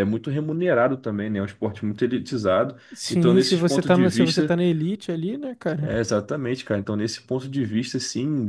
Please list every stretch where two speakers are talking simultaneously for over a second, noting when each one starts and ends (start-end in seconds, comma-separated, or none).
2.9-4.5